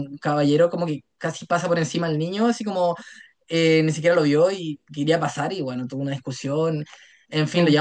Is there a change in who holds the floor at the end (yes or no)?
no